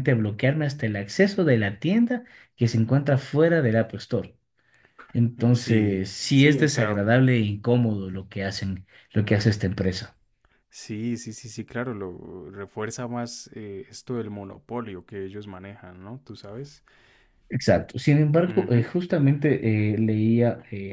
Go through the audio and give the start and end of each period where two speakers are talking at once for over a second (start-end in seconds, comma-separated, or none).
5.4-7.0